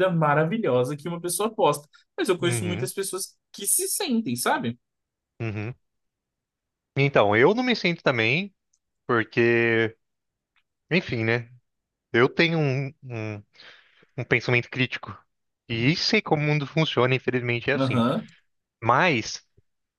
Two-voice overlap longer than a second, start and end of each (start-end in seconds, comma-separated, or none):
none